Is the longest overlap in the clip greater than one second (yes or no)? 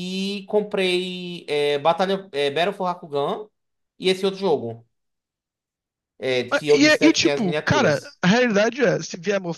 yes